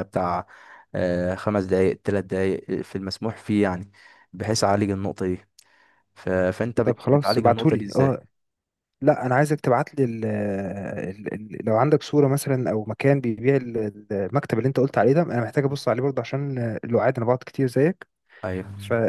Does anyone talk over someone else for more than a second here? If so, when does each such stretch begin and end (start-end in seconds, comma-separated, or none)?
6.8-8.2